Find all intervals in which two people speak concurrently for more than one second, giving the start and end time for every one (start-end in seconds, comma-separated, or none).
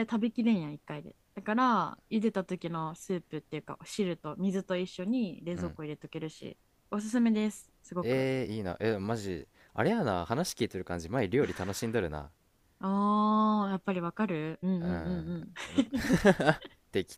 none